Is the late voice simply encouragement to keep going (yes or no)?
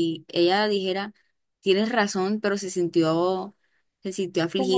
yes